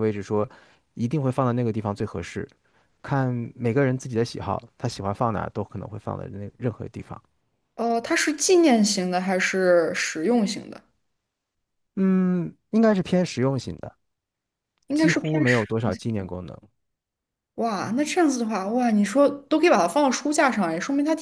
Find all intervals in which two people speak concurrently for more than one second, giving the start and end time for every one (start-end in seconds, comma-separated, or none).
14.9-16.2